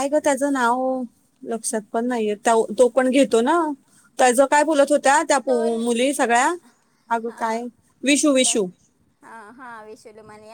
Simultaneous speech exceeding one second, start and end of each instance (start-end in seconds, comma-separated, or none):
none